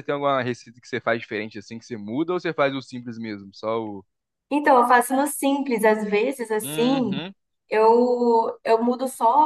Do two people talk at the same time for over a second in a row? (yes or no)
no